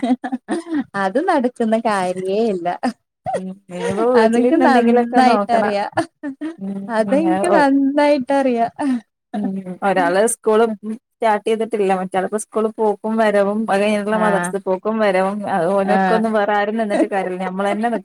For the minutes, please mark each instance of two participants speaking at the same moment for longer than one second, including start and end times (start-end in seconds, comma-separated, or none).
4.2-5.7